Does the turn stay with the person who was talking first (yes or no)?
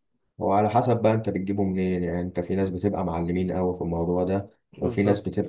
yes